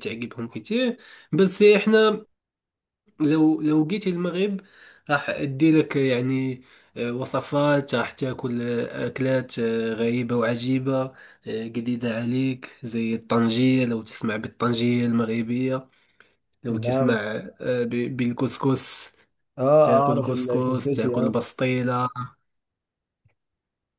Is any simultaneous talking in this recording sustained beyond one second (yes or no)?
yes